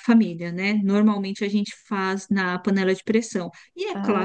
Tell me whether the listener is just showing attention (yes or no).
yes